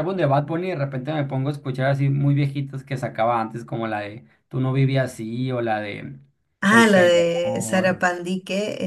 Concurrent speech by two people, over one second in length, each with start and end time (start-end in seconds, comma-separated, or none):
6.6-8.0